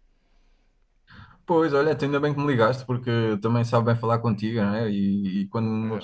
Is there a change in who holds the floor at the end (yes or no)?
no